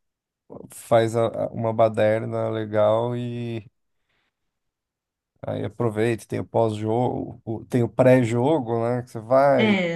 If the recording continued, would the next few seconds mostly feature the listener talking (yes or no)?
yes